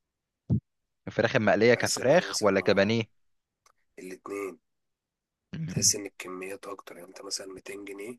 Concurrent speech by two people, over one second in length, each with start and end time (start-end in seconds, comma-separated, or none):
1.7-3.0